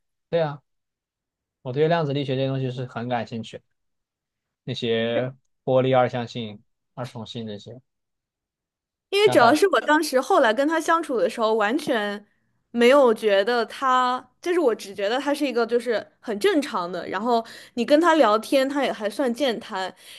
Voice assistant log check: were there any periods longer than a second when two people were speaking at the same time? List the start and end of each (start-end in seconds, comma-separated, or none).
none